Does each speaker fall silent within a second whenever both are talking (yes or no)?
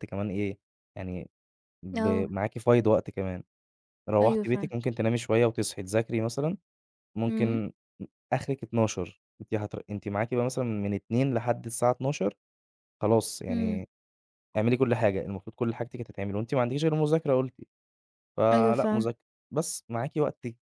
yes